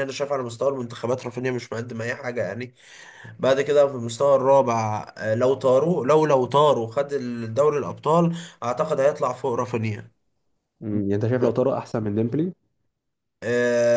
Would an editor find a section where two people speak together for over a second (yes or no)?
no